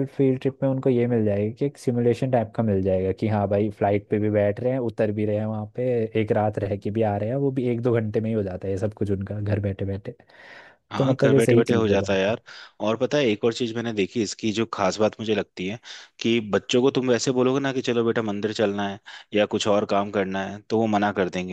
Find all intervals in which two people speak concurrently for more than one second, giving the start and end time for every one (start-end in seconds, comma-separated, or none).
11.0-12.2